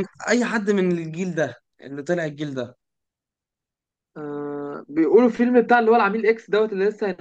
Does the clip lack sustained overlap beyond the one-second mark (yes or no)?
yes